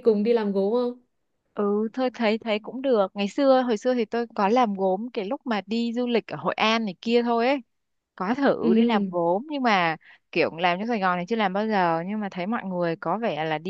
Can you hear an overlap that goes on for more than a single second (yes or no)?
no